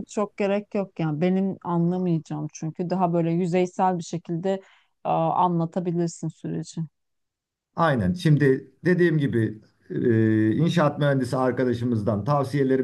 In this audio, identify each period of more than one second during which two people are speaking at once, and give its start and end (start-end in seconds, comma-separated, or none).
none